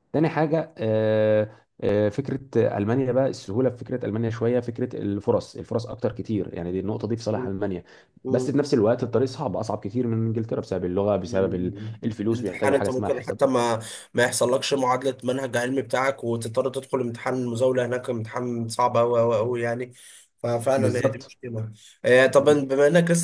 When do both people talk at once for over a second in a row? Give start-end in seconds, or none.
11.2-13.4